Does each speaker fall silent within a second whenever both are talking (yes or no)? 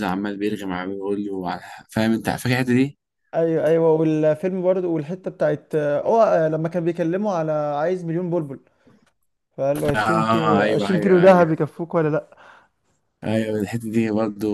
no